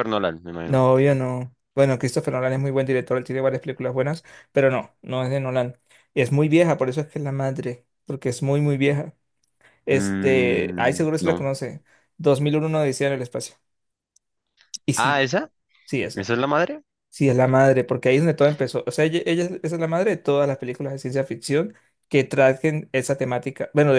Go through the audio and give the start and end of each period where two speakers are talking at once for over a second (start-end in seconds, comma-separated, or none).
9.9-11.5